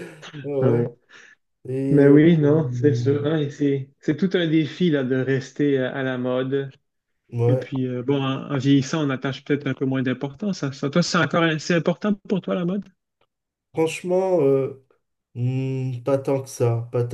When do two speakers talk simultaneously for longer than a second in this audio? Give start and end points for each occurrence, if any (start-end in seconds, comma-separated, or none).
1.9-3.3